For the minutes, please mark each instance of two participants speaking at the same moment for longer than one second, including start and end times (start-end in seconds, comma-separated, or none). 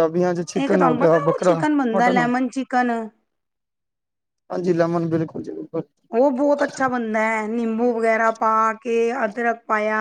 0.6-2.3